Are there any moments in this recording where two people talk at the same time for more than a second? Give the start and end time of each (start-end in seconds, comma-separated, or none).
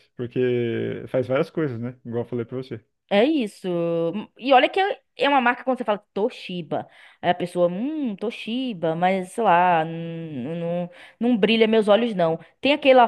none